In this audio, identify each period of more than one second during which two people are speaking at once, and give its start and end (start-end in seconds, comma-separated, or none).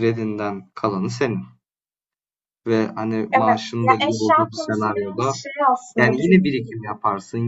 3.3-5.3